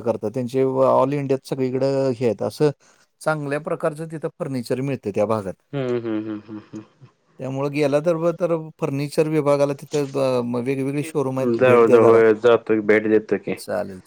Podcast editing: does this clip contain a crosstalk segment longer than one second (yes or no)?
no